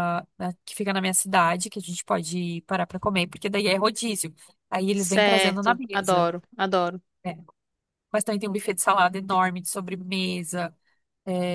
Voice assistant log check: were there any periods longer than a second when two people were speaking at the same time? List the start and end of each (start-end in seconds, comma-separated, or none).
4.9-6.3